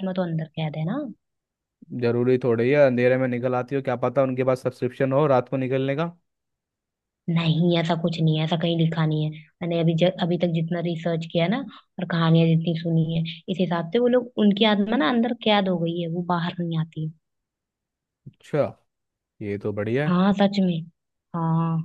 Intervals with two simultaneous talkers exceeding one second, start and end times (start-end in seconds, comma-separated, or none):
none